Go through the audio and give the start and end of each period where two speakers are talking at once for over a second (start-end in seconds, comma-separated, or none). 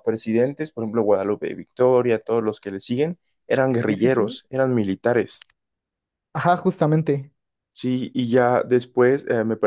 none